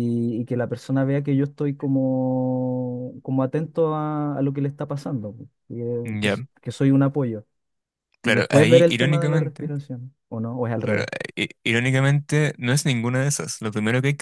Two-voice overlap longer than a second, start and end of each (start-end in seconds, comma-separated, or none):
8.2-9.7